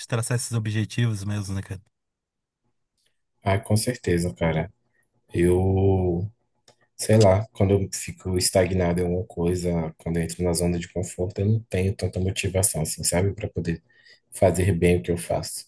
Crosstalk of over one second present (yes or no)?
no